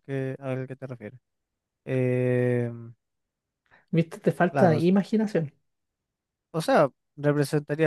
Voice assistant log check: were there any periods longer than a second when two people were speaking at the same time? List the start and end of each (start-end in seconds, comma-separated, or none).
none